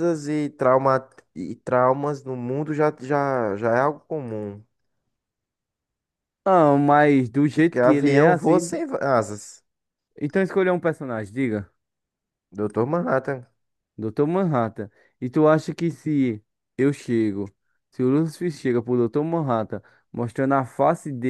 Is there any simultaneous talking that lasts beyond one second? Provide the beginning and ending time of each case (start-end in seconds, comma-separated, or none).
7.5-8.8